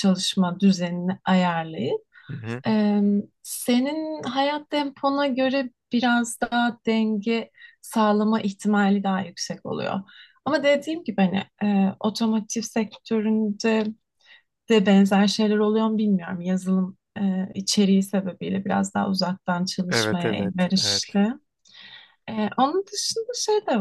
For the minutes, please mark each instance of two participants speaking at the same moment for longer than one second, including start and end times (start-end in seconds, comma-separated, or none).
19.9-21.2